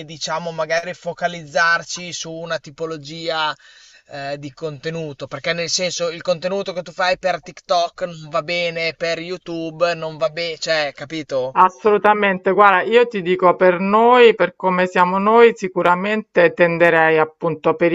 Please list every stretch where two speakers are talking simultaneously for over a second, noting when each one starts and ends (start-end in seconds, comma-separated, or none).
none